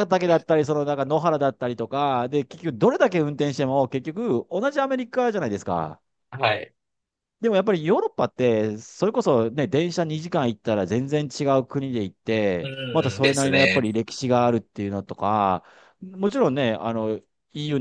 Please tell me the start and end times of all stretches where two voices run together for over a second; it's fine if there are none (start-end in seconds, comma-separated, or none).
12.6-13.9